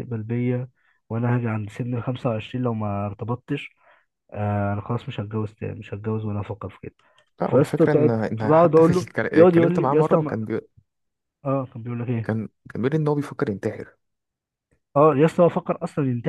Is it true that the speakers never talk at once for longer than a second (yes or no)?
no